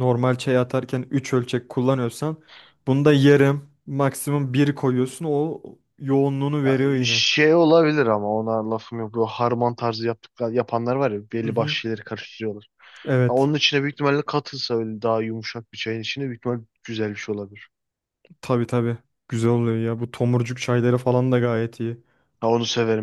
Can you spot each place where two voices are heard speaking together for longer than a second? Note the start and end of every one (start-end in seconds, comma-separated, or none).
none